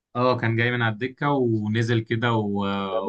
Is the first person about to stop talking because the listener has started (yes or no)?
no